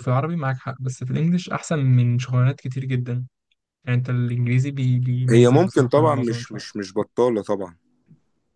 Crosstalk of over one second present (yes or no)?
yes